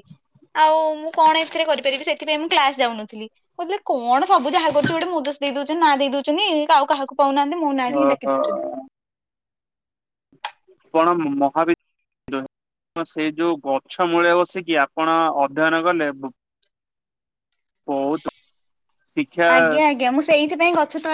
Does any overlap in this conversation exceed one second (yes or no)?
no